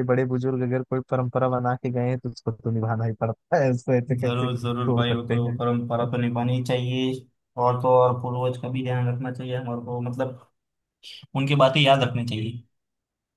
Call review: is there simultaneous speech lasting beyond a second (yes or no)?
yes